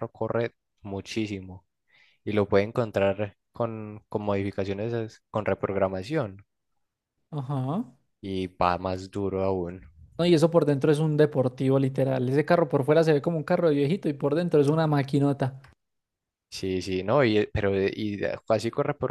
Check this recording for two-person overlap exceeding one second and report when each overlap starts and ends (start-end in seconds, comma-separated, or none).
none